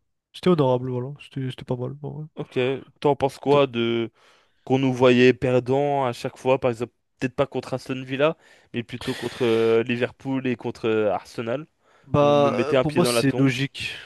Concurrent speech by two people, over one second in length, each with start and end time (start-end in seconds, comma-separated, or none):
12.2-13.5